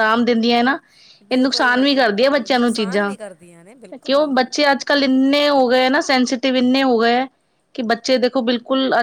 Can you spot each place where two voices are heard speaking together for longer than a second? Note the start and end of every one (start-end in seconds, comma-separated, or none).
1.3-3.1